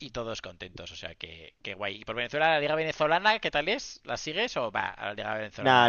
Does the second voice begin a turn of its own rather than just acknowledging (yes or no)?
yes